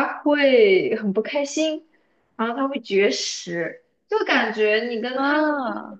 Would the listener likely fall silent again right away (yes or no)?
yes